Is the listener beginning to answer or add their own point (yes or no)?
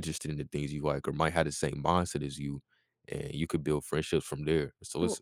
no